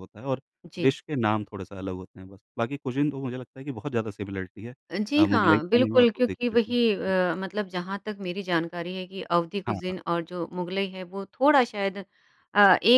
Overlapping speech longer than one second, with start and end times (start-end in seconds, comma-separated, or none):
5.2-7.1